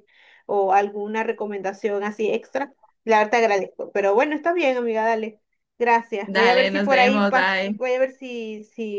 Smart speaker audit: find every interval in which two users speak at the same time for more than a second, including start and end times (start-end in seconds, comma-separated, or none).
6.2-7.8